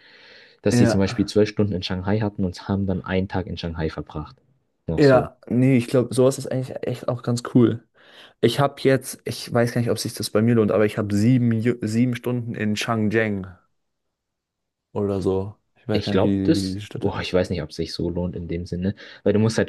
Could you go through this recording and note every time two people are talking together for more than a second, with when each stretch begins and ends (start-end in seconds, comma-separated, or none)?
15.9-17.3